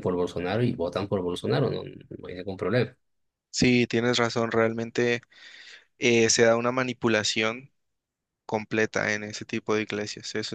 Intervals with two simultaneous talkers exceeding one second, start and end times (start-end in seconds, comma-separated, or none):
none